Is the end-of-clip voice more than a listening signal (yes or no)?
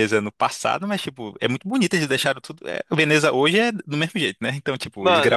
no